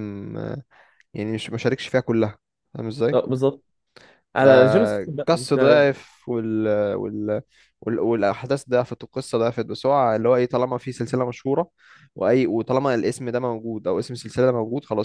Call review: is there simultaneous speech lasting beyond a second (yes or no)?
yes